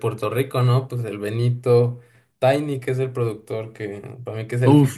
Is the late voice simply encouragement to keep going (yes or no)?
no